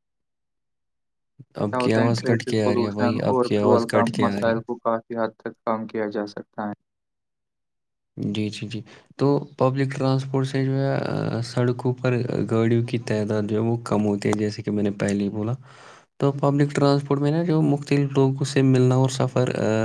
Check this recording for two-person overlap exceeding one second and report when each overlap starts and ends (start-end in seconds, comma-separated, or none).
1.7-4.5